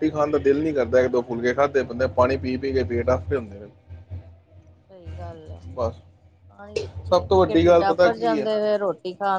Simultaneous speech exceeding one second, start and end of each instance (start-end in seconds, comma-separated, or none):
7.1-8.5